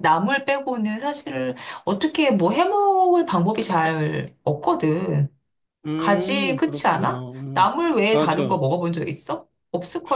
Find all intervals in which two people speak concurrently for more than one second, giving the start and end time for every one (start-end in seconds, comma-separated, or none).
6.0-8.6